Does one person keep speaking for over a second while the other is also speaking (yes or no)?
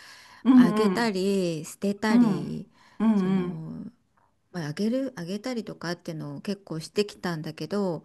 no